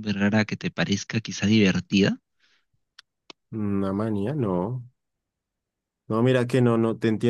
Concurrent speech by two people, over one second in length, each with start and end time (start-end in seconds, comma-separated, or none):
none